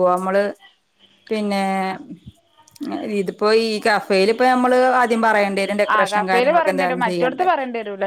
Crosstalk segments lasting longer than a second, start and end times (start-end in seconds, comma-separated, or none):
6.0-7.5